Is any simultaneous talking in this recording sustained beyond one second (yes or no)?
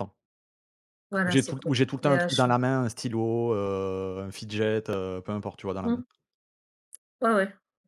yes